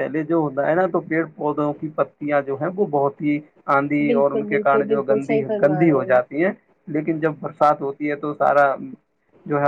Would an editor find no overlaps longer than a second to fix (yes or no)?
no